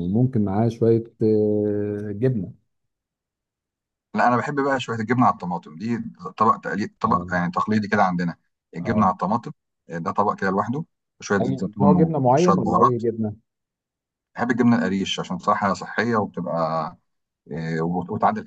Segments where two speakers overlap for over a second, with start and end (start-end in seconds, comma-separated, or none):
11.4-13.0